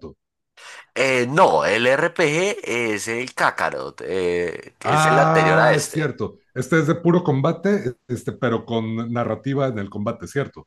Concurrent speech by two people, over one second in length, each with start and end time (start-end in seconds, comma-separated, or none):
4.8-6.1